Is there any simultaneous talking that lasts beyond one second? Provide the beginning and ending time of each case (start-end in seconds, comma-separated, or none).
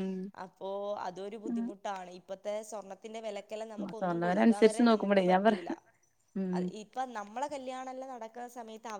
3.6-5.6